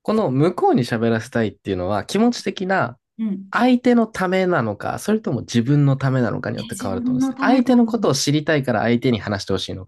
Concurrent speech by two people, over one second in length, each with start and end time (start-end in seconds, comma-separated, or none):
6.5-8.2